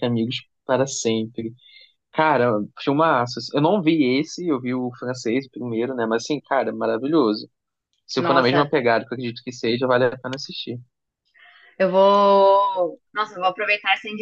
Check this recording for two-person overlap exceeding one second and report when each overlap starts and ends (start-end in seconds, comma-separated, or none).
none